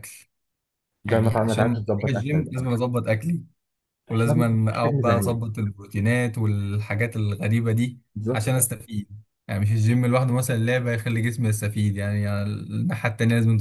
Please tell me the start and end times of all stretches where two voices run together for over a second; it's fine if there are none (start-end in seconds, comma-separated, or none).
1.1-2.7, 4.1-5.5